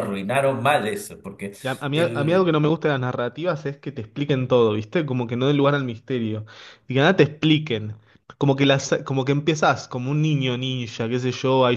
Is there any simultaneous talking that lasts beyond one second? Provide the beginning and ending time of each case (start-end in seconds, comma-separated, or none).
none